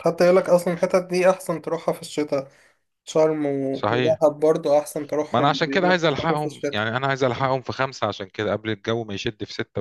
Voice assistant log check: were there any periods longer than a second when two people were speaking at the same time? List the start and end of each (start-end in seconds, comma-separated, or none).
5.3-6.8